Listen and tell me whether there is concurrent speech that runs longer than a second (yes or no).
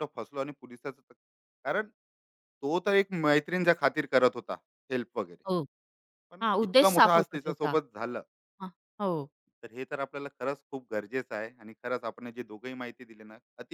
yes